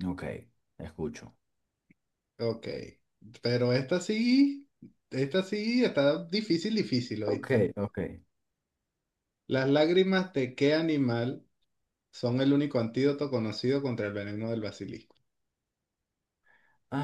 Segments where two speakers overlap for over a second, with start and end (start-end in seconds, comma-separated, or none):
none